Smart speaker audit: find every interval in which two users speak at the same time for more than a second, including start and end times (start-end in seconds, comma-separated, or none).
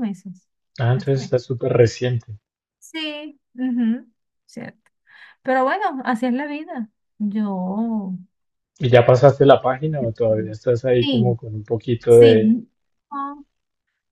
none